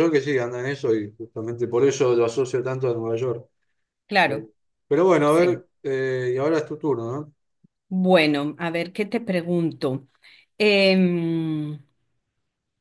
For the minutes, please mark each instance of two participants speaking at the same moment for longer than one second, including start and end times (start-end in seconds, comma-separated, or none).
none